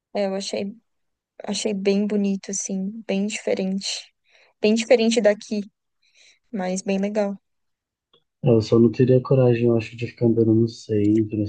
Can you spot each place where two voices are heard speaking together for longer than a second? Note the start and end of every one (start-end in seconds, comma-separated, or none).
none